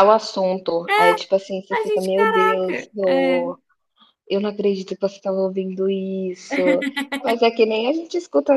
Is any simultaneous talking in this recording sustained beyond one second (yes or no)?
yes